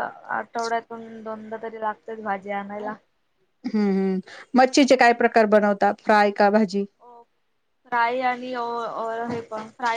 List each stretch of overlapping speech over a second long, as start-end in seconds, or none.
none